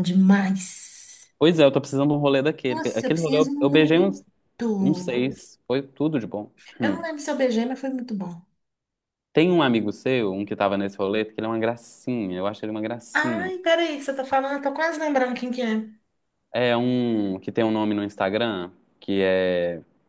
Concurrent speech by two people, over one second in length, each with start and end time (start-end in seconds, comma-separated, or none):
2.7-4.1